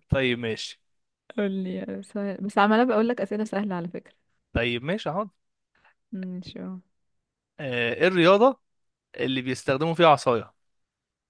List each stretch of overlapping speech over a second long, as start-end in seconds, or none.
none